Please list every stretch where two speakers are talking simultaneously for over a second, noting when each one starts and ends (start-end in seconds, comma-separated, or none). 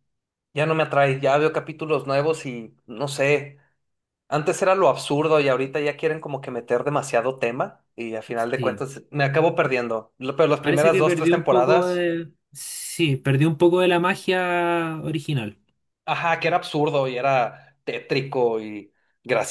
10.6-12.1